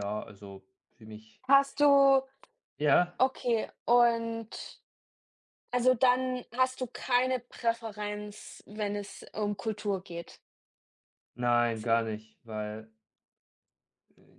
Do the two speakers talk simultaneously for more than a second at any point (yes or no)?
no